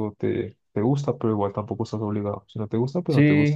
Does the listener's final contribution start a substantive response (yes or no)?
yes